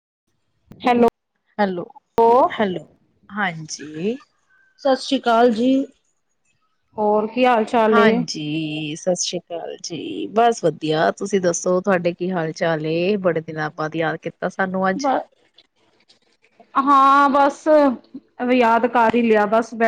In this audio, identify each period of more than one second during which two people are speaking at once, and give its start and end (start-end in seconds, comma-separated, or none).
none